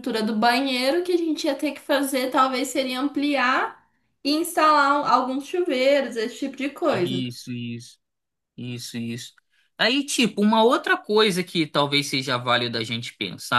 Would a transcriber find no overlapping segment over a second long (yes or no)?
yes